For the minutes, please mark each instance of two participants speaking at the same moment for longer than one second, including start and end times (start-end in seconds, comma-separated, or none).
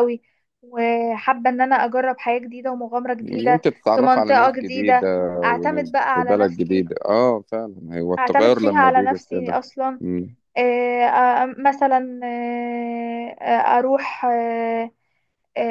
3.2-6.8, 8.2-9.6